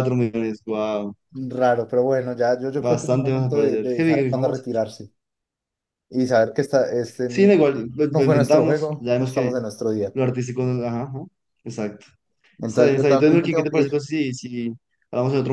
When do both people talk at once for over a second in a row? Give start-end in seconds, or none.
2.8-4.5, 7.3-9.6, 12.7-14.0